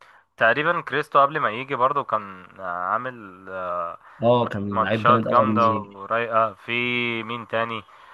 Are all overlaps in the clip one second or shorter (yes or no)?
no